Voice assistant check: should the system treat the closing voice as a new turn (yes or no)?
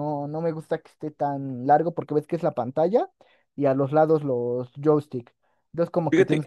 no